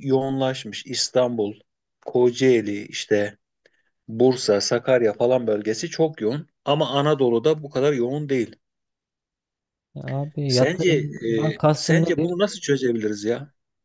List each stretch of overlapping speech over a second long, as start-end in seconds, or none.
10.5-12.3